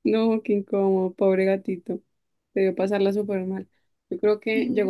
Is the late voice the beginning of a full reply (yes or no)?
no